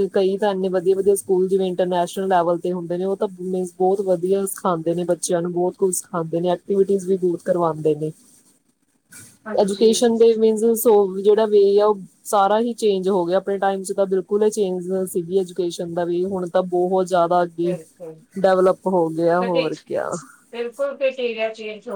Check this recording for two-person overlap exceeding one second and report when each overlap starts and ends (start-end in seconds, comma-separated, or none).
none